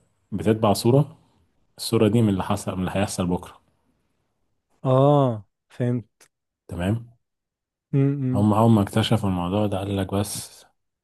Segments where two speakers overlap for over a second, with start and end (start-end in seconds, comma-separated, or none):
none